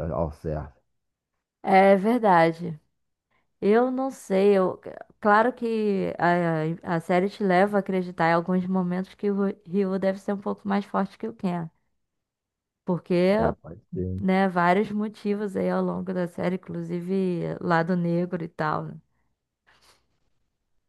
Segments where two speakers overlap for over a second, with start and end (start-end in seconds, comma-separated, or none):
none